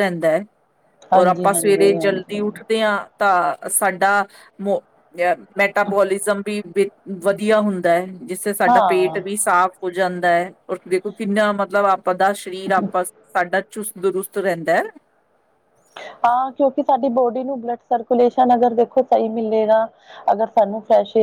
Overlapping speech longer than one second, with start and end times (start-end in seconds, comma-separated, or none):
1.1-2.4